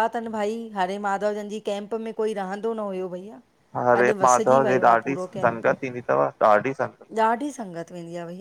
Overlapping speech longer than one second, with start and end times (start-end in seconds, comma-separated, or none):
3.9-5.7